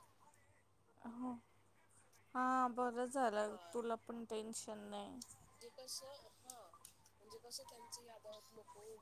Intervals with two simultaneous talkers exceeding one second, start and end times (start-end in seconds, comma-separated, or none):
none